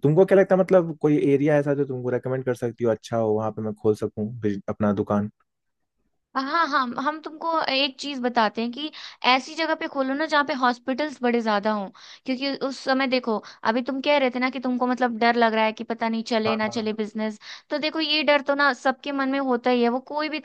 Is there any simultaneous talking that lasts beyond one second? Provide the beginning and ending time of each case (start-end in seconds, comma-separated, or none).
none